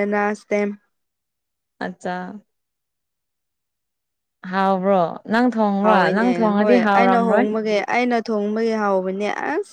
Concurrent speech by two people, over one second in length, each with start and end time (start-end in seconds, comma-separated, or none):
5.8-7.5